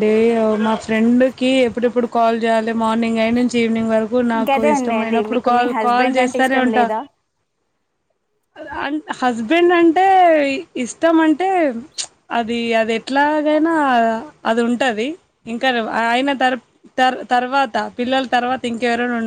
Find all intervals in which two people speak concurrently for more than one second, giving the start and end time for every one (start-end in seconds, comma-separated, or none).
4.4-6.9